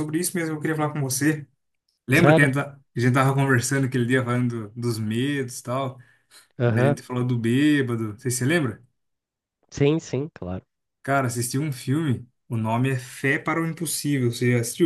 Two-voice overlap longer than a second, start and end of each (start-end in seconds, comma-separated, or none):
none